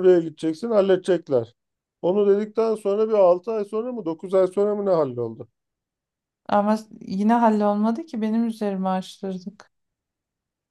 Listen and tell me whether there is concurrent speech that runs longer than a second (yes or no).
no